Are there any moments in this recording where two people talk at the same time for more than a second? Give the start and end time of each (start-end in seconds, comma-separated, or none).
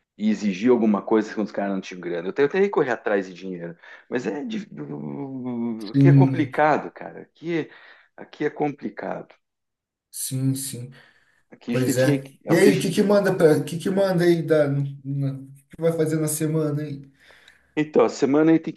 11.7-13.0